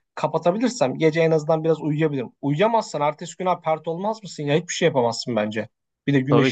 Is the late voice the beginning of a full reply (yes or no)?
yes